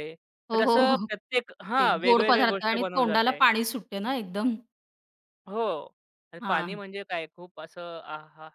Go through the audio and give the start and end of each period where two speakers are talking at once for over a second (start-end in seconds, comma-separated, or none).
1.8-3.4